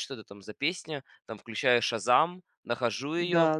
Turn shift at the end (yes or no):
no